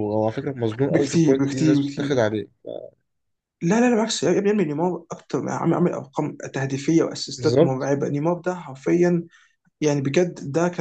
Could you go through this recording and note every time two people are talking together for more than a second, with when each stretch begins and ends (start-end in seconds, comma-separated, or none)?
0.9-2.1